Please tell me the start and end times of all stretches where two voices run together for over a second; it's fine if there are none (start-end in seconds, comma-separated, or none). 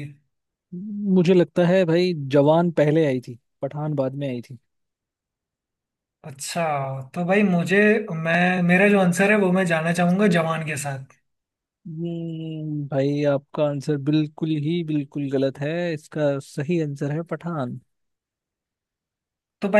none